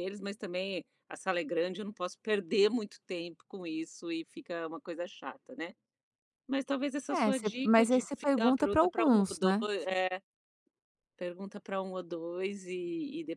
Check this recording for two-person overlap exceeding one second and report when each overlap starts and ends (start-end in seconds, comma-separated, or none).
7.1-9.9